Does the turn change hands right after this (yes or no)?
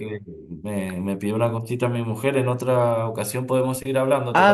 yes